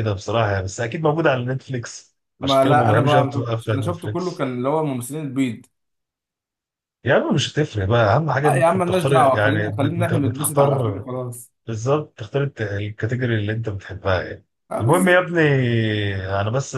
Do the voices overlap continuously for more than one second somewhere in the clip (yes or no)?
yes